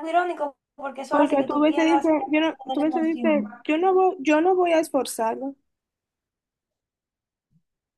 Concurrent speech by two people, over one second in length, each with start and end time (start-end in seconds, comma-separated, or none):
1.1-3.6